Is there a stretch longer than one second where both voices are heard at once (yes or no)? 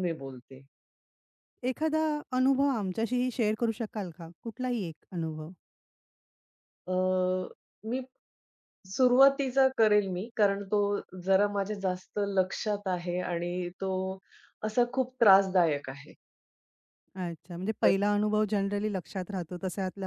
no